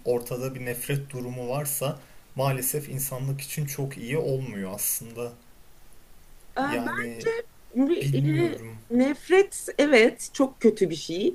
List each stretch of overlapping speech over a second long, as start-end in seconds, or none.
none